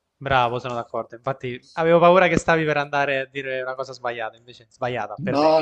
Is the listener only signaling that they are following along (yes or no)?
no